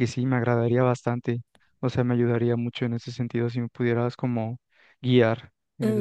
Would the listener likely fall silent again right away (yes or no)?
no